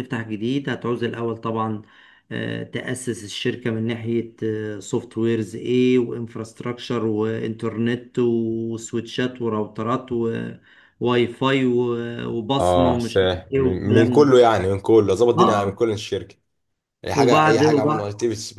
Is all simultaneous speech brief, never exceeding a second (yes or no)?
no